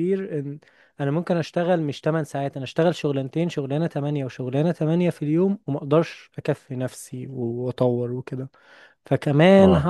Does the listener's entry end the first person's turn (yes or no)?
no